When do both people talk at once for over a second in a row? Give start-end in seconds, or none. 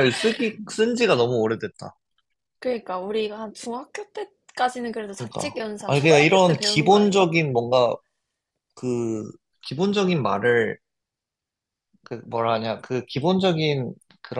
5.1-7.3